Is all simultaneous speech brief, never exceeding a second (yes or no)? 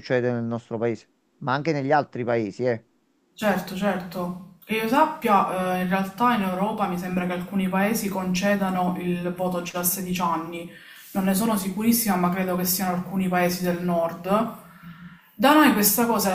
yes